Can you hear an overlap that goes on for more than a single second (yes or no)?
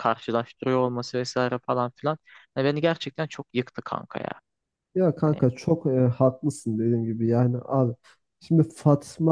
no